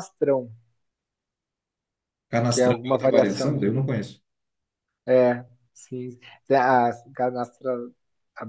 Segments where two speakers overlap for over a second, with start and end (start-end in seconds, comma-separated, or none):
2.5-3.8